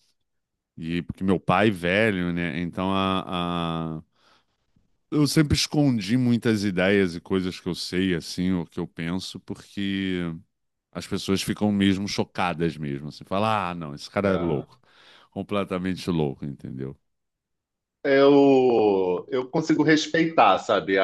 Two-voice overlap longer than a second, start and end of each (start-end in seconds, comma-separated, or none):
none